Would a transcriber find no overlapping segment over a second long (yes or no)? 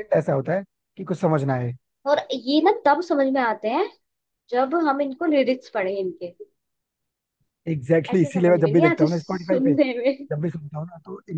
no